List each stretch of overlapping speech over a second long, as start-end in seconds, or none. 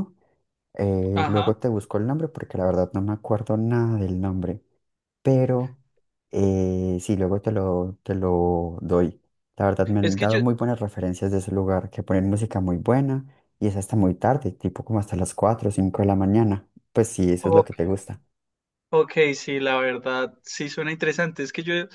none